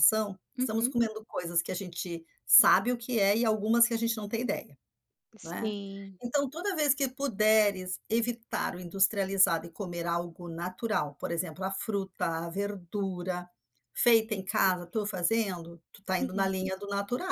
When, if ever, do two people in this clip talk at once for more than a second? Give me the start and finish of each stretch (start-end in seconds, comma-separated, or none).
none